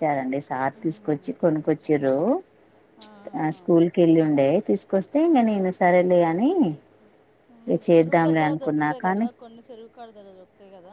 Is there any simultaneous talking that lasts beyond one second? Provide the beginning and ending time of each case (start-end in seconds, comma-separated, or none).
0.8-2.1, 7.5-9.3